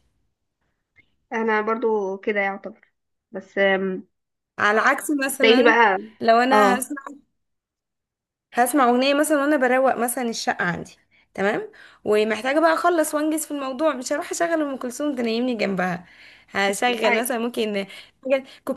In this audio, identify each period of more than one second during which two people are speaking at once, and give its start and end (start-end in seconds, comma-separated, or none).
none